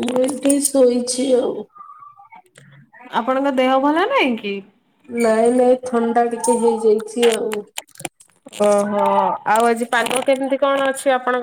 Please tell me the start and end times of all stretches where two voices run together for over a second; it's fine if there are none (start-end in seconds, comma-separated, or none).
none